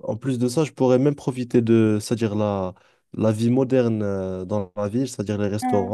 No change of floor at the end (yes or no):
yes